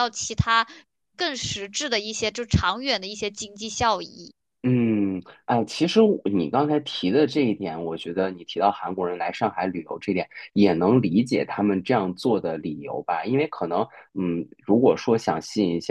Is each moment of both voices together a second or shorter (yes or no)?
yes